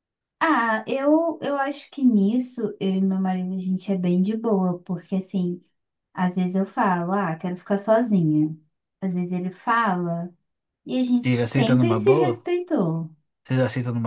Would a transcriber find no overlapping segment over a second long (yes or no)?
no